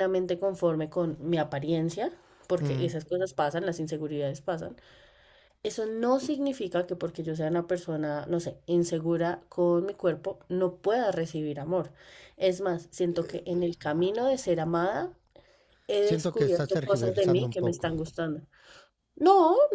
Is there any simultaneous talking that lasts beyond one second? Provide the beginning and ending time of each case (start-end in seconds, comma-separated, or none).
16.1-17.9